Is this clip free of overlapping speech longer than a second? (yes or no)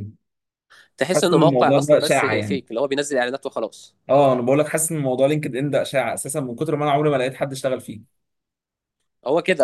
no